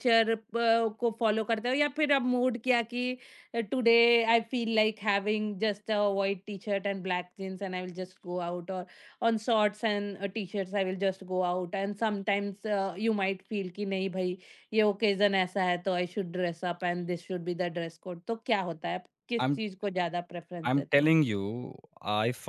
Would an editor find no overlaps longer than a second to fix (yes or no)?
yes